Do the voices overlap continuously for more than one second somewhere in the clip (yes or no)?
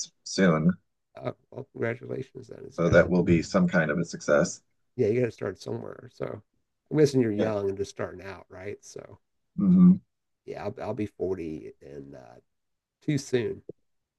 no